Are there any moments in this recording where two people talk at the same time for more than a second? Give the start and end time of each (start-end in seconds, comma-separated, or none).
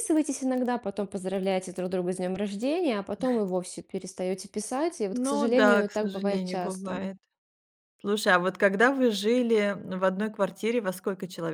5.1-7.1